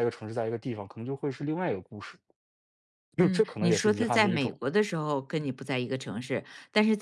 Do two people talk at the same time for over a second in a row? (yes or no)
yes